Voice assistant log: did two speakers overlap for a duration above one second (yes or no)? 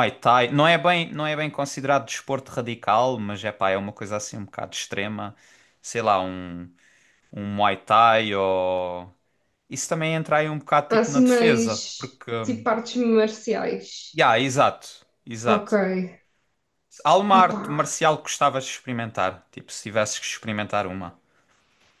yes